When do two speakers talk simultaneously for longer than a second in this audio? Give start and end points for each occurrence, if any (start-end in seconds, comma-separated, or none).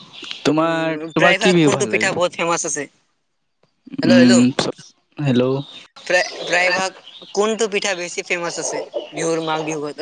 0.6-2.2